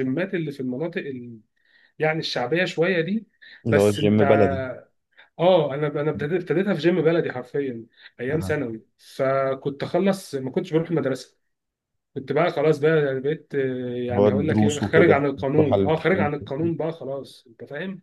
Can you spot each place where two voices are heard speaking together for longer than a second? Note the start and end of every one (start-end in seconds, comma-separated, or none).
14.2-16.3